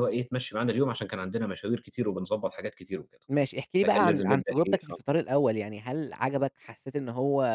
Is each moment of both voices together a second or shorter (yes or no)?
no